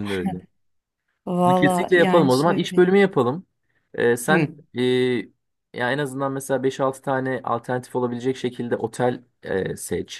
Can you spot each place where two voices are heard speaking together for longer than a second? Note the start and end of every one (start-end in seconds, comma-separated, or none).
1.4-2.8